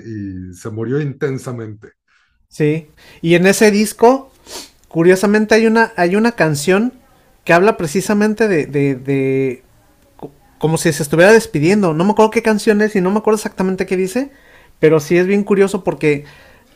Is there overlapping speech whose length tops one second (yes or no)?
no